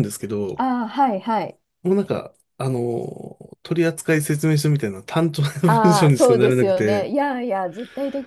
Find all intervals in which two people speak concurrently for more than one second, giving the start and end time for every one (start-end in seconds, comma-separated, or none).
5.7-7.1